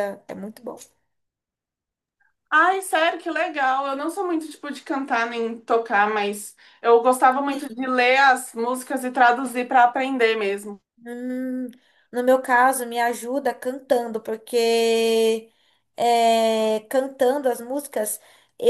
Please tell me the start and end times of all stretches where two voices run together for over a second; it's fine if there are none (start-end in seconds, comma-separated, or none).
none